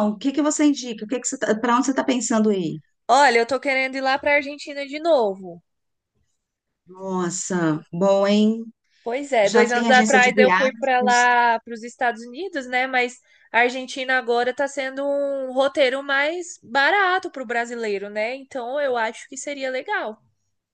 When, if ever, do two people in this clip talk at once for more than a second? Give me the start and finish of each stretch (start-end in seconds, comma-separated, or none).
9.4-11.3